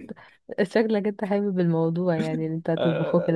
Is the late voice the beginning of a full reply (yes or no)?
yes